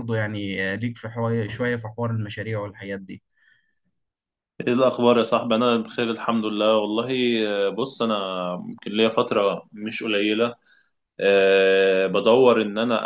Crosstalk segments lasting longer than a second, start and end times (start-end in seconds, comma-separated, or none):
none